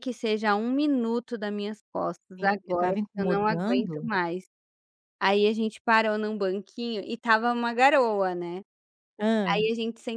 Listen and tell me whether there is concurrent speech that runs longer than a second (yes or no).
yes